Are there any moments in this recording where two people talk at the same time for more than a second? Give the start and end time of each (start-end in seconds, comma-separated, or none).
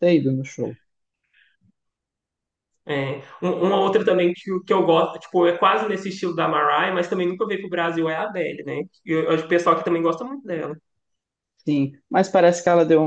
none